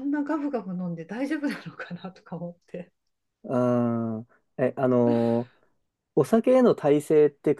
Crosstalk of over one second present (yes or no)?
no